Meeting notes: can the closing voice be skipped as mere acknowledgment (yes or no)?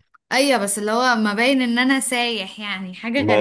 no